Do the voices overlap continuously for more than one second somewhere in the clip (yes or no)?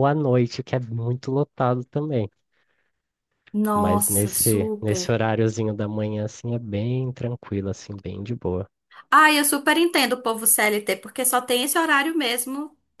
yes